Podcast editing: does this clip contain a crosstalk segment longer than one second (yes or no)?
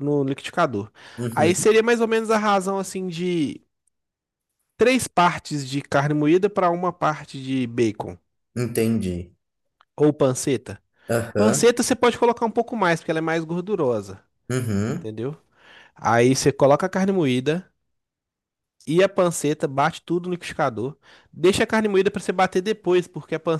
no